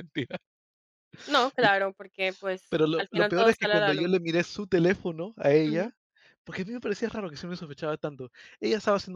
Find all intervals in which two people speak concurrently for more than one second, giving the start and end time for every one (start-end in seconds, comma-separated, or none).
2.7-4.1